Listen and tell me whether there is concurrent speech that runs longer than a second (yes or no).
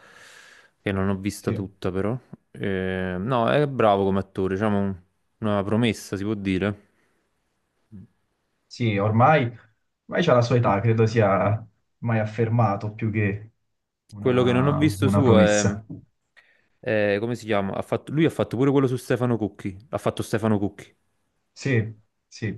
yes